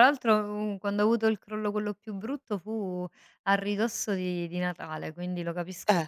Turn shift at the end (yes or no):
no